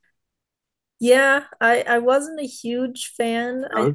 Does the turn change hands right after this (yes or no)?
no